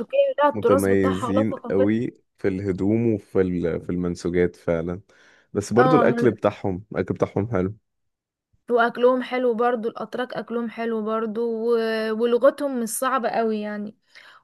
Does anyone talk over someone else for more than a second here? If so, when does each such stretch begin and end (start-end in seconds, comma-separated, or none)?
0.5-2.0